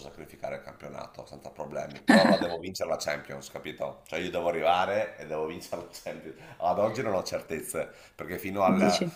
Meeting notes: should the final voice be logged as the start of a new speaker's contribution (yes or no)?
no